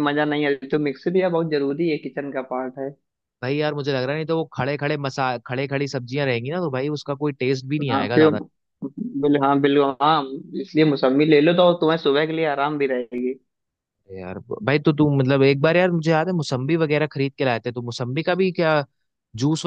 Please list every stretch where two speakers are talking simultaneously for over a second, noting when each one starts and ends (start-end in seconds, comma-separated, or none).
none